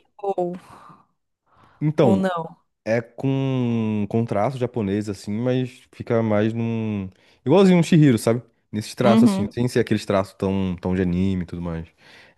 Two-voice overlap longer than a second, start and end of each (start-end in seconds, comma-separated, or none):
none